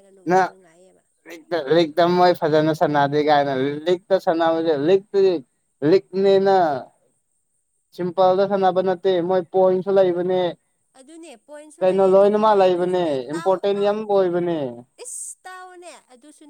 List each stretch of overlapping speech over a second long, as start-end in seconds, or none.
11.8-14.0